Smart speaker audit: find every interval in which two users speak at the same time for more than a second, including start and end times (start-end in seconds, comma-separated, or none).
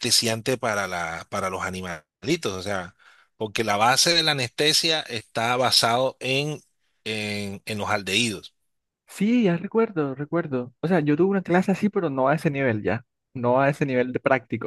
none